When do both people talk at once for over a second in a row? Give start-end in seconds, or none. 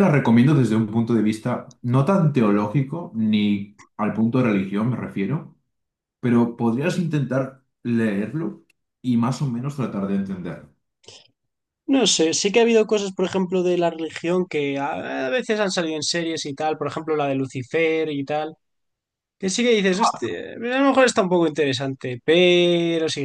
none